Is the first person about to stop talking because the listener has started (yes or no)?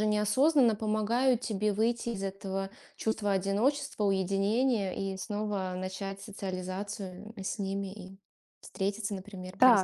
yes